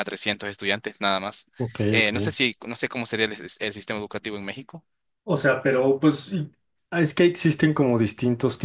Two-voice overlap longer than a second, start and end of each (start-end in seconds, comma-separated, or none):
none